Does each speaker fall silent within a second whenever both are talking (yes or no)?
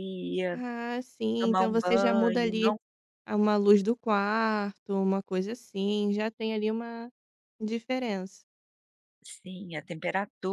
no